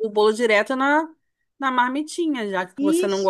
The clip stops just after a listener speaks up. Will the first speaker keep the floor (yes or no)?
yes